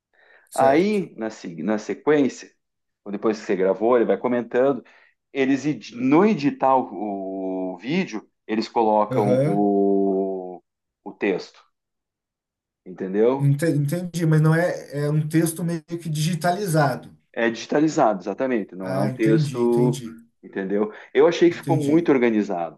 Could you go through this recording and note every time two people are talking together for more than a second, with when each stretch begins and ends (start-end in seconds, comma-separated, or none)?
18.8-20.0